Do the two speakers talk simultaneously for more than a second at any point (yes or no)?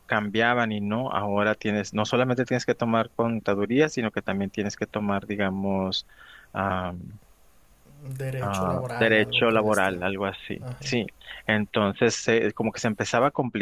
yes